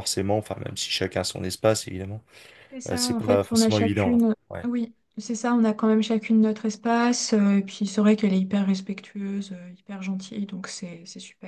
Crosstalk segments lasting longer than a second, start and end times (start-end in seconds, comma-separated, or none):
2.9-4.7